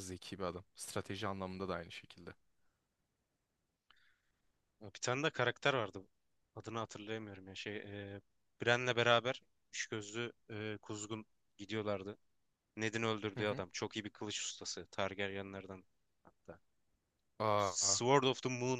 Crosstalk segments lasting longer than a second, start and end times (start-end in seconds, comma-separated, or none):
none